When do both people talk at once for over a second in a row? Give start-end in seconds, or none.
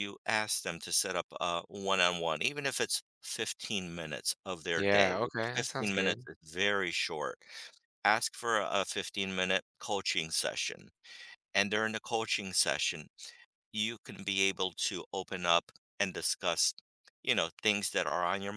4.7-6.3